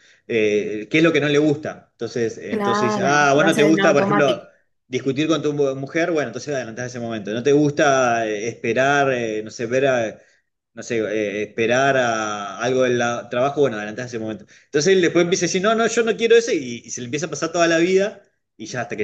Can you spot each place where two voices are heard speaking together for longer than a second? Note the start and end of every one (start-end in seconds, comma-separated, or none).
2.5-4.4